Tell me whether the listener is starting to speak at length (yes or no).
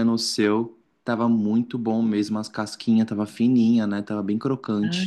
yes